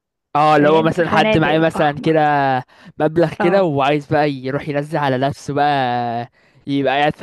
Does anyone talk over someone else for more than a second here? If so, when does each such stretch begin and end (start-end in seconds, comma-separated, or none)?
0.6-2.1